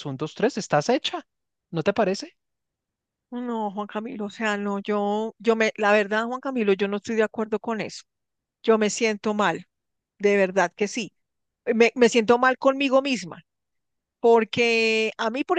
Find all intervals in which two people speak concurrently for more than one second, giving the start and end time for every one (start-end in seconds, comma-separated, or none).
none